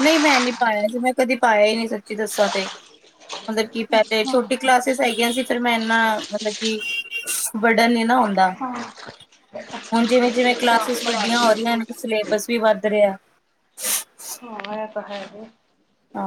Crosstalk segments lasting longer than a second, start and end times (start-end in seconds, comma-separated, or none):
9.8-11.9